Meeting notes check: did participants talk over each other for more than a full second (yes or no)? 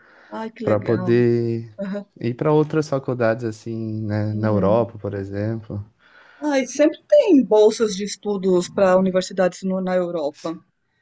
no